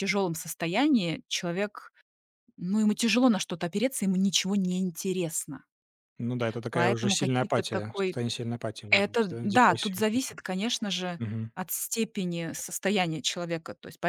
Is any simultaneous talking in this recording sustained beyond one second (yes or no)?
yes